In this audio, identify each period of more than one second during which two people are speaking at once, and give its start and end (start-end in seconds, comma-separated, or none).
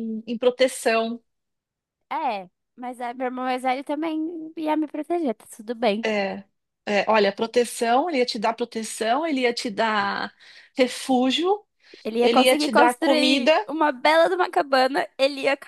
12.2-13.5